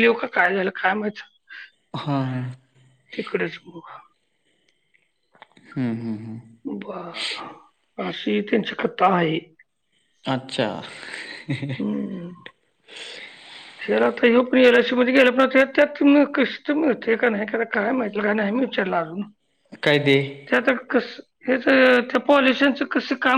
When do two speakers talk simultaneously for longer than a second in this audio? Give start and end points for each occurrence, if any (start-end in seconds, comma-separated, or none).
none